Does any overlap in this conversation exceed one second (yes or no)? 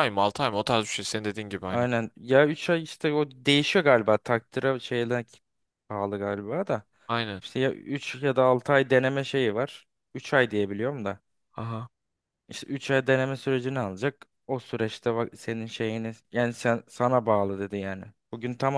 no